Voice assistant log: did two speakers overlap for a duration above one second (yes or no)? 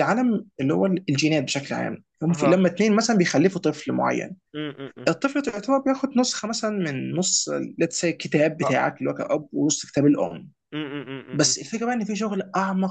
no